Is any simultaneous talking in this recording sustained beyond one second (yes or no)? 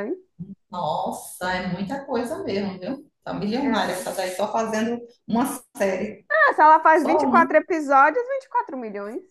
no